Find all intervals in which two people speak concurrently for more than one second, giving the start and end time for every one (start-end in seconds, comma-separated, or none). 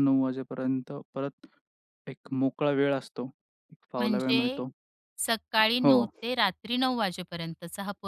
none